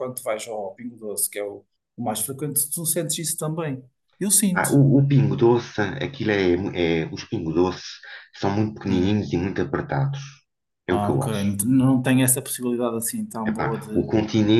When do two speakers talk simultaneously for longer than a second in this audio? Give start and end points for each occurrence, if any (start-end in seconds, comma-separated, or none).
none